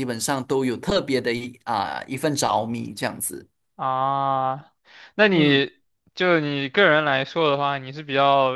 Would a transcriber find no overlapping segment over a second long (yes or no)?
yes